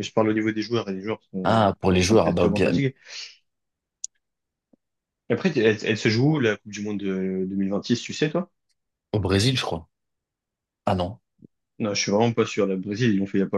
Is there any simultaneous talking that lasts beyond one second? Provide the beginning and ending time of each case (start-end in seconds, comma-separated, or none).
1.4-2.8